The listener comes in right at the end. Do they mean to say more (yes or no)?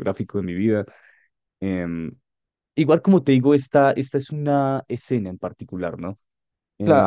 yes